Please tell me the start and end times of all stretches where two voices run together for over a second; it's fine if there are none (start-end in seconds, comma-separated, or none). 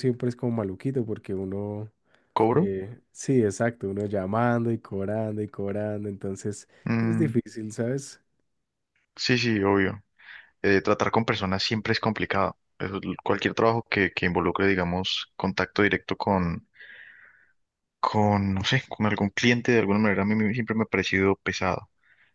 none